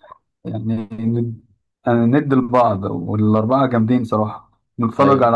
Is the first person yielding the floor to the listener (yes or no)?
no